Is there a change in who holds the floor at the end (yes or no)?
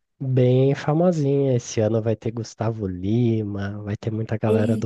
no